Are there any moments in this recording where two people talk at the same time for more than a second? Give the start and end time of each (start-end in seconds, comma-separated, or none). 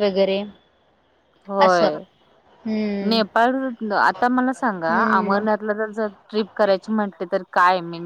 none